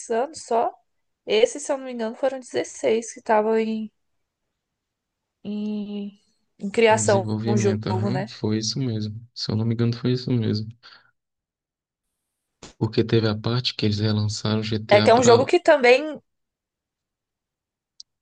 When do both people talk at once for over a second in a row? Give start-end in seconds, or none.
6.9-8.3